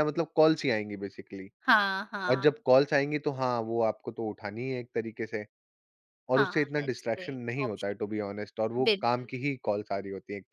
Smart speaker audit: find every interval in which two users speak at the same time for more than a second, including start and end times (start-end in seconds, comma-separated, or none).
6.4-8.2